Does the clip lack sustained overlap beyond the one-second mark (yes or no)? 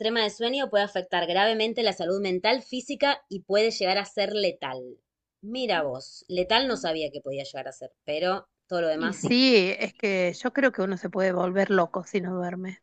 yes